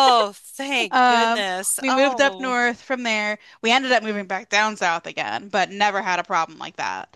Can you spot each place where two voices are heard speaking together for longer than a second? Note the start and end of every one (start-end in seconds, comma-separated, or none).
0.9-2.6